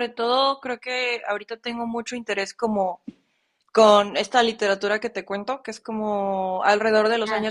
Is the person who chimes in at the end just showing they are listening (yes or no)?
yes